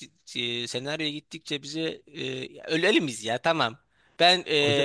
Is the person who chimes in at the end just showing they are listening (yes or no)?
yes